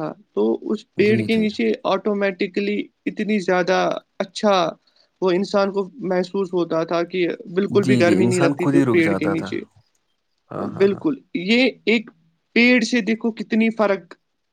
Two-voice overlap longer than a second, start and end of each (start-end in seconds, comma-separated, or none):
7.8-9.6